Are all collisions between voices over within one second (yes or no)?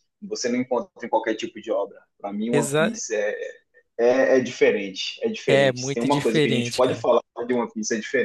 no